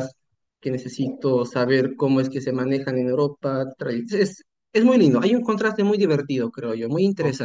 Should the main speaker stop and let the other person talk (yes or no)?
yes